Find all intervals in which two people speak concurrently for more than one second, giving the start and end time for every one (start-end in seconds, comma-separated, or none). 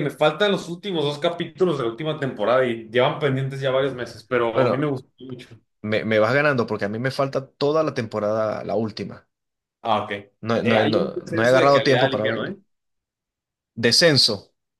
10.6-12.6